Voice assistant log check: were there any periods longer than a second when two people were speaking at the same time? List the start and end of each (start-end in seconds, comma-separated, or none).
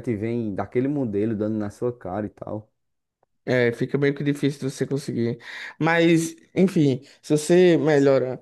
none